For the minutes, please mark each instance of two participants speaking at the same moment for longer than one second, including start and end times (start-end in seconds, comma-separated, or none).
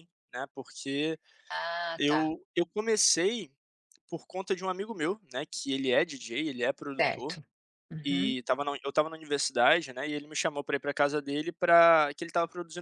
none